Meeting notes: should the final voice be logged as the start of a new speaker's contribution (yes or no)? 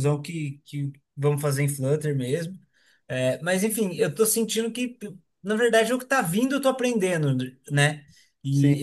no